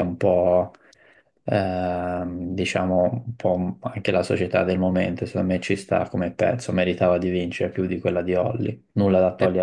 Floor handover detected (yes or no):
yes